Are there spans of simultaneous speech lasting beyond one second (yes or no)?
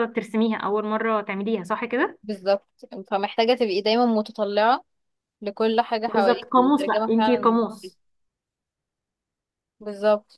yes